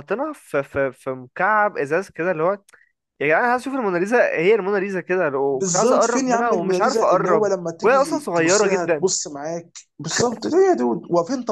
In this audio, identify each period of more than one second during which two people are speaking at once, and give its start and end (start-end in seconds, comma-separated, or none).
5.5-9.1